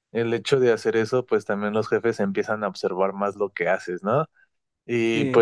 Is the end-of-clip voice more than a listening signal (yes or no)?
no